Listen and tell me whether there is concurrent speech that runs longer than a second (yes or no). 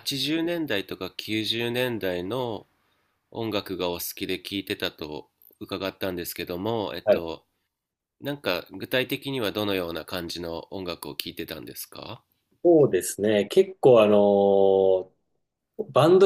no